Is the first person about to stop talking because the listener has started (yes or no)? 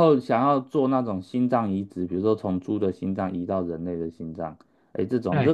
no